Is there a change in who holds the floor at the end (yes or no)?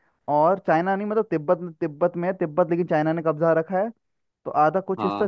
no